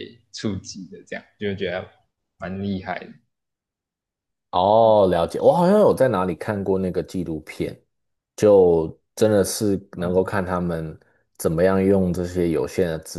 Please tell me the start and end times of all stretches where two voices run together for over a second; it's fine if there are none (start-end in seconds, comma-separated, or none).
none